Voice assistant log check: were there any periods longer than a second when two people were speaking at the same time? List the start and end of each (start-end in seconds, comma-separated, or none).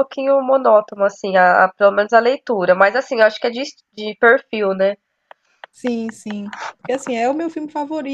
none